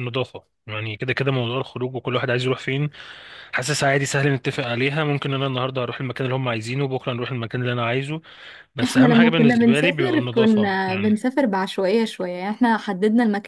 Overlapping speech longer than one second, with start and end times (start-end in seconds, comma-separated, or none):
8.8-11.2